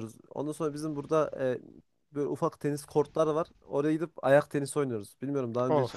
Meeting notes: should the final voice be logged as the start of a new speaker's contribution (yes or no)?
yes